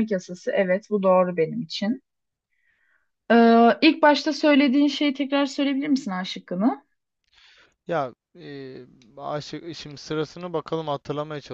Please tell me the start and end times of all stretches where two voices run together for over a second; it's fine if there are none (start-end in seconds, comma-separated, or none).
none